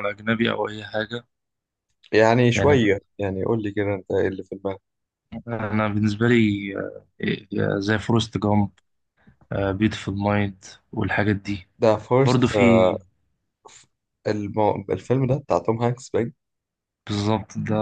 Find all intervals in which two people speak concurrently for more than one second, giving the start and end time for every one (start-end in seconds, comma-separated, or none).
none